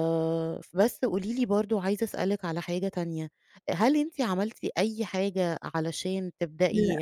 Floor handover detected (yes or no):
no